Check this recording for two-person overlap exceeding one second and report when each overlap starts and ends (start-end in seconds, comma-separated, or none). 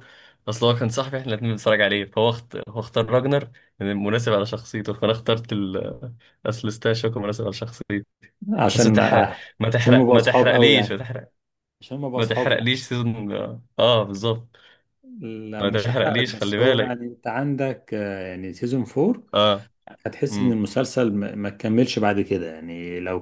9.8-11.1, 15.6-17.0